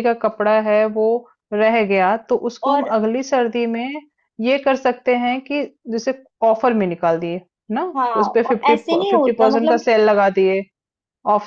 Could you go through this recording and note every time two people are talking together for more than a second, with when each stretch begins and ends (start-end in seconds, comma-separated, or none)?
8.2-9.9